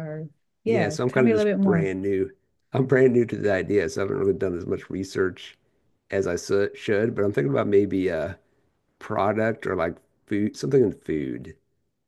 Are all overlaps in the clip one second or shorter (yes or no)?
no